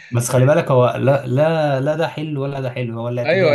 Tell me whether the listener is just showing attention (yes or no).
no